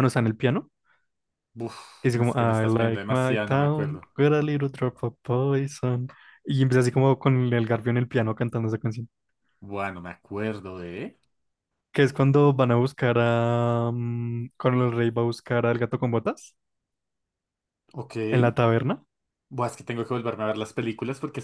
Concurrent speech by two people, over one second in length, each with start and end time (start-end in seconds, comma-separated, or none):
2.0-4.1